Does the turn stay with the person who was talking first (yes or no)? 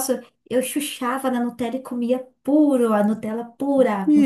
no